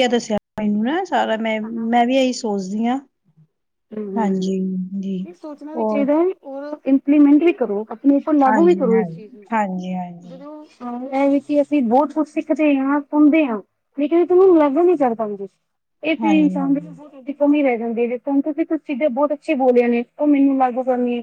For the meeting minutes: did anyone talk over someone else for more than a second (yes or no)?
yes